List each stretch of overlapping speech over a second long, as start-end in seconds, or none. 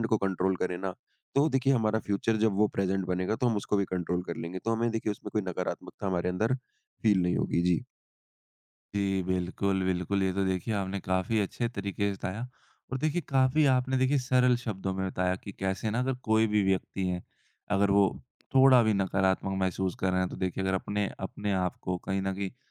none